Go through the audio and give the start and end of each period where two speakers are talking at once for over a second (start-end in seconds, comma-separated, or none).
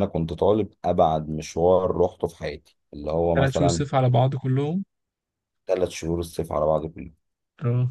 none